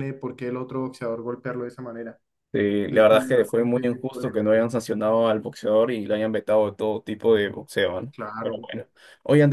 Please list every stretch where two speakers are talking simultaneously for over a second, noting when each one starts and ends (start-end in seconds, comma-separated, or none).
2.9-4.7